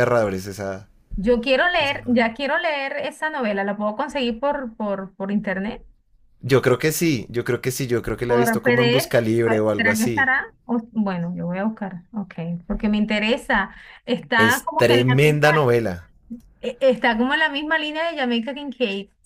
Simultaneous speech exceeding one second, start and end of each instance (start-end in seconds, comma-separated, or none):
8.3-10.3, 14.4-15.7